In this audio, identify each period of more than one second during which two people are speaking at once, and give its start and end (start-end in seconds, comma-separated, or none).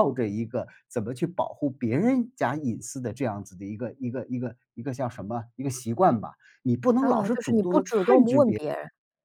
7.0-8.6